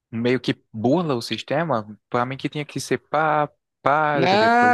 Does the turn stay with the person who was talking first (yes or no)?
no